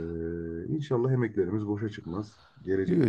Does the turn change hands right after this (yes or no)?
no